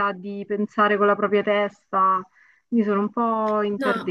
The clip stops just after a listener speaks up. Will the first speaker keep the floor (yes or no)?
no